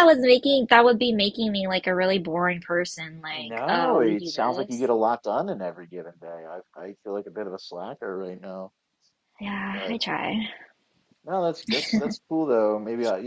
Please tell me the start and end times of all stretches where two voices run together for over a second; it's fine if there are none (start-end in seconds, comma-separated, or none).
3.3-4.9